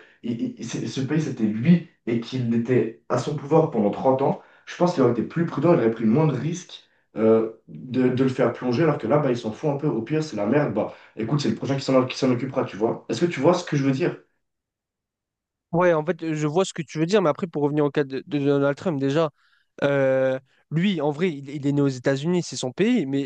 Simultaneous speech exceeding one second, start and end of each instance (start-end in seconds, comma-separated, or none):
none